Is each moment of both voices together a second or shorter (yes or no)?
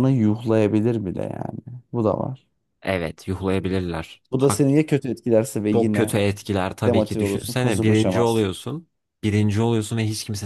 no